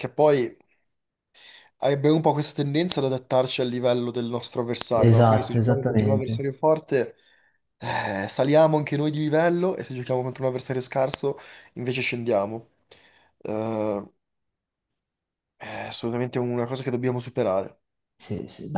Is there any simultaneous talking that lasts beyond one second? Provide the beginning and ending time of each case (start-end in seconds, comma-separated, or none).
5.0-6.4